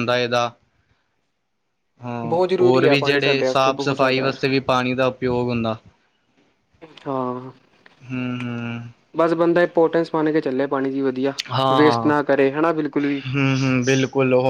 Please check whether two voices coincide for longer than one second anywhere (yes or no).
yes